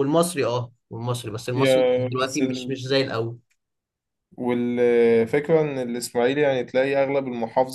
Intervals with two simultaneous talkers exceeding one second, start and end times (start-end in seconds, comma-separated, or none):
1.5-2.8